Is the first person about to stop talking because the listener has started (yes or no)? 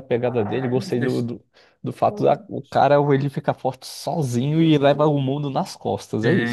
yes